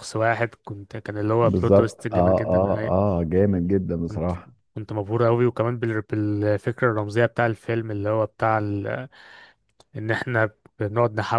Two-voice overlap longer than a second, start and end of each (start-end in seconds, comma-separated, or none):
1.4-2.9